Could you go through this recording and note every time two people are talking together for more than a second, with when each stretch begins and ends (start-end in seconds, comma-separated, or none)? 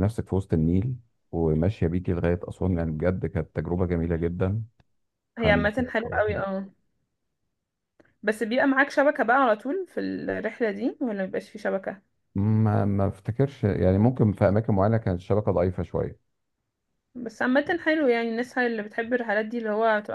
none